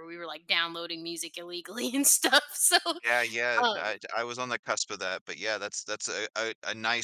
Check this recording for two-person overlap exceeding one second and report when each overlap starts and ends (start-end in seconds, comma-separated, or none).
none